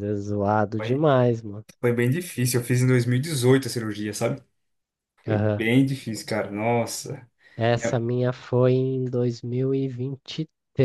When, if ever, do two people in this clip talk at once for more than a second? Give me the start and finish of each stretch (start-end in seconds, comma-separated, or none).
none